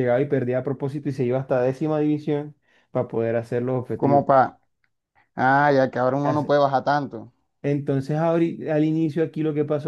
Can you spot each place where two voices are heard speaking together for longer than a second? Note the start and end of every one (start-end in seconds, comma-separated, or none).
none